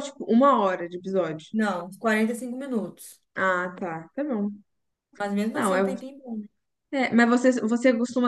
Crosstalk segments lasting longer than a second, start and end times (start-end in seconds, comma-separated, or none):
none